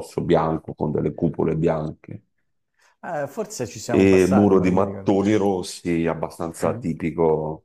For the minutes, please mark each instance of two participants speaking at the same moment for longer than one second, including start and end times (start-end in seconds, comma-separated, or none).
3.9-5.1